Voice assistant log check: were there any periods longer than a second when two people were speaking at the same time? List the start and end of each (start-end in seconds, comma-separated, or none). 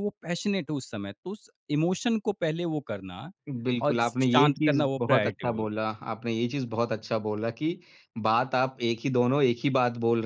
3.8-5.7